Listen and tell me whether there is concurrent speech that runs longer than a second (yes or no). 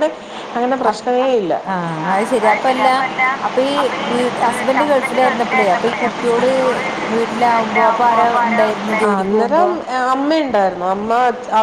yes